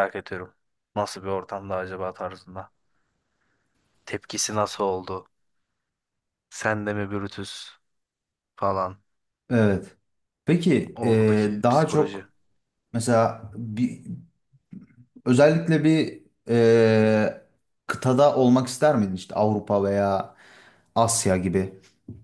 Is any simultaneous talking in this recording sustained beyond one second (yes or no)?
yes